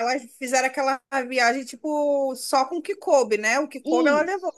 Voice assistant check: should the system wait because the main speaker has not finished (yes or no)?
no